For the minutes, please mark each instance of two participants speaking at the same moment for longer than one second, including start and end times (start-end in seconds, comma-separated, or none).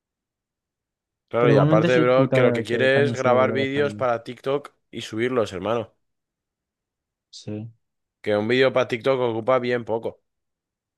1.4-4.0